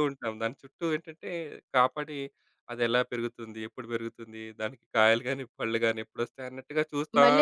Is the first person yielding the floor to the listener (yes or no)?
yes